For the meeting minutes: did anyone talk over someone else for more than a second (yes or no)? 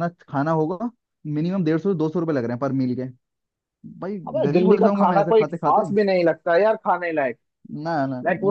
yes